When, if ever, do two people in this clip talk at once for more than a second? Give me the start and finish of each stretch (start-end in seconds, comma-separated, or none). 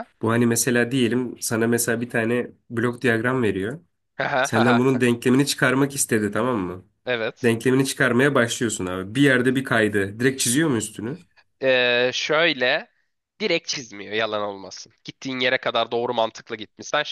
none